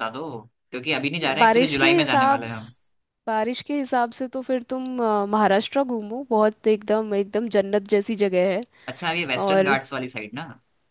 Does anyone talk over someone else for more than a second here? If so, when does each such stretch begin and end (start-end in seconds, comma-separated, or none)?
1.4-2.7